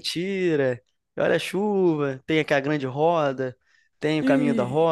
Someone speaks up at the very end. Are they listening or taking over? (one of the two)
taking over